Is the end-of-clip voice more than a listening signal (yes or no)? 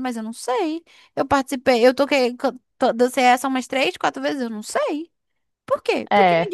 no